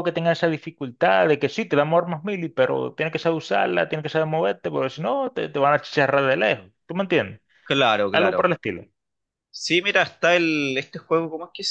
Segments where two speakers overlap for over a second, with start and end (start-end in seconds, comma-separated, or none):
none